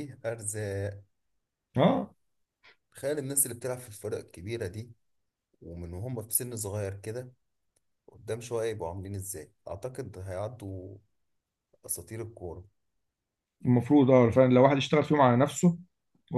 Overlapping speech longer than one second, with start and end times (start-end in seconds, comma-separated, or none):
none